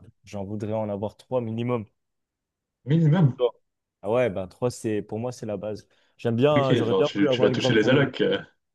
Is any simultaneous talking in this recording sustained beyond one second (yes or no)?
yes